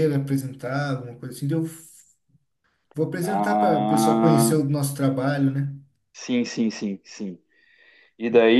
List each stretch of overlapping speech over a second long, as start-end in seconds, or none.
3.2-4.6